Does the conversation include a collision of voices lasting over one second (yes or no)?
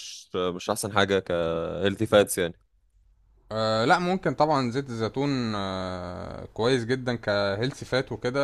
no